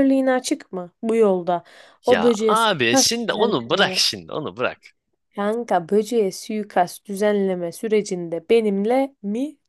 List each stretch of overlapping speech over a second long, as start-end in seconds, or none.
2.1-4.0